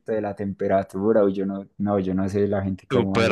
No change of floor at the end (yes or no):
no